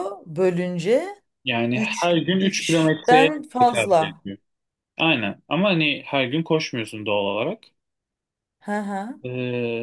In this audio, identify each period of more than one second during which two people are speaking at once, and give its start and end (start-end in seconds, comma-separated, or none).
1.8-4.2